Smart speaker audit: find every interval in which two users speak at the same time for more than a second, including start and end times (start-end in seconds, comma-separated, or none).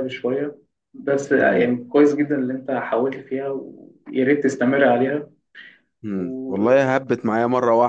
none